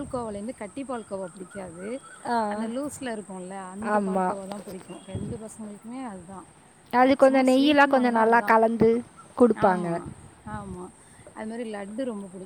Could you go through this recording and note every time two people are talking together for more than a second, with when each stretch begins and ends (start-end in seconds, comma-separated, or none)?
7.0-8.5